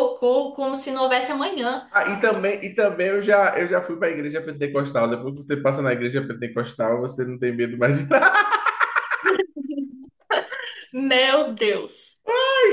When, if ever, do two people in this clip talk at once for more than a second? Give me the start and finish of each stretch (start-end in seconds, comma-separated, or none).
none